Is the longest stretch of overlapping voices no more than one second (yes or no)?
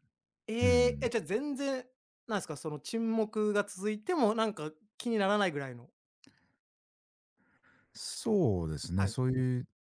yes